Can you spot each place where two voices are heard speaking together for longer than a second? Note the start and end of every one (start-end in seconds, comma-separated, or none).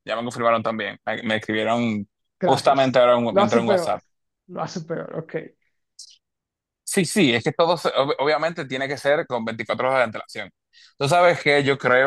2.4-4.0